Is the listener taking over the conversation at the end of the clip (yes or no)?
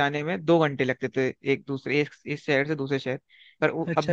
no